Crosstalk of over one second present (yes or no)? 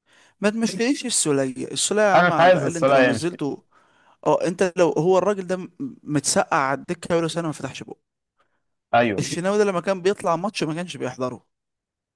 yes